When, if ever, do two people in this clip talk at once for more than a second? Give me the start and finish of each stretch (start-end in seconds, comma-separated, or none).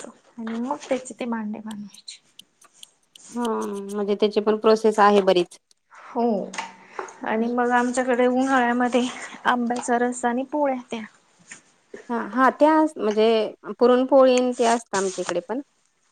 none